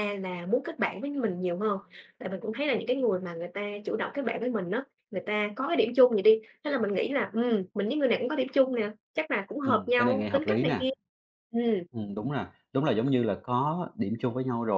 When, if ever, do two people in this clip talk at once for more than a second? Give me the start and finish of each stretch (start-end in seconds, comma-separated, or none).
9.6-10.9